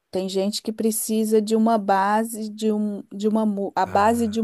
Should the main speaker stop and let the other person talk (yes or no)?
no